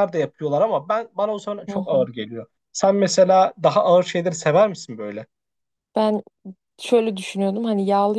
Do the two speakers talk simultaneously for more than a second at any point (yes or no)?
no